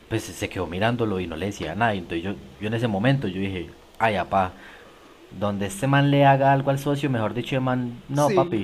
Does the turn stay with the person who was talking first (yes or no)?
yes